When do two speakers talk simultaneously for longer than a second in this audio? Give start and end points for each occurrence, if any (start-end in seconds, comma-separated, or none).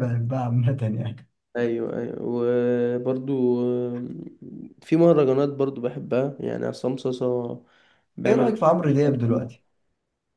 8.3-9.5